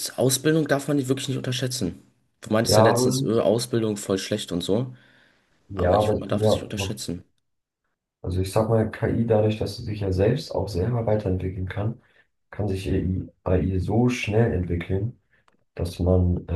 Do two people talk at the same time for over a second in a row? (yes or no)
yes